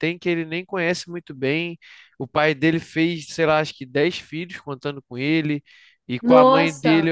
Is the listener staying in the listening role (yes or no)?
yes